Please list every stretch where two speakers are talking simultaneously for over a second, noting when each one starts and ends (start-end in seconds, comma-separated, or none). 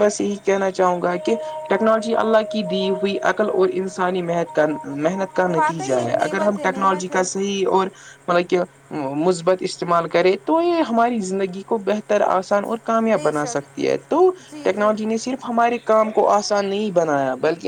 5.6-7.2